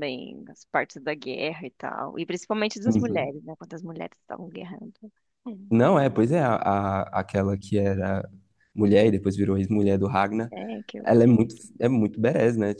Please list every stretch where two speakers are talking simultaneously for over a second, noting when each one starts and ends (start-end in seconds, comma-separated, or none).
none